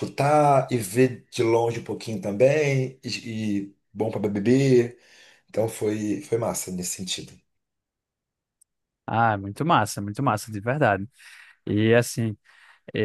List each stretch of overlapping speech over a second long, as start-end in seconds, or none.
none